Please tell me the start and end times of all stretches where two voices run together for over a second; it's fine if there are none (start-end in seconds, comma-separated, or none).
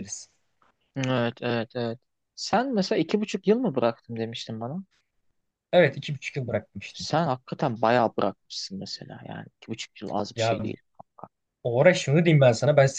none